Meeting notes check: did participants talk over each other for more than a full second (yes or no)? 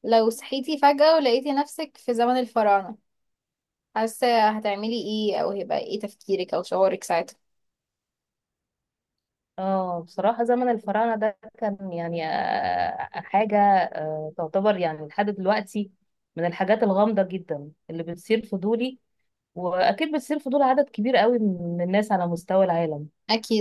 no